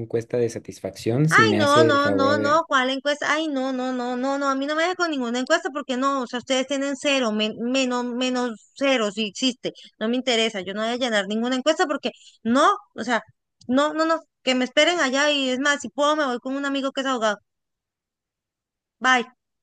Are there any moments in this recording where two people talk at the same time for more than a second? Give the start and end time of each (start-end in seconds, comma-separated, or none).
1.3-2.6